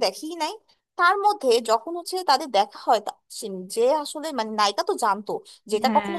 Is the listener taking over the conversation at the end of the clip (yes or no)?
no